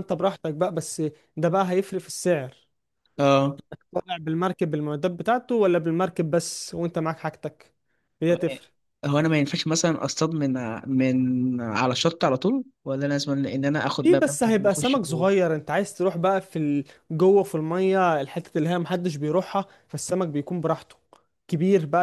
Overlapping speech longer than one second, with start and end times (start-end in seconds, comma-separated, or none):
14.0-15.3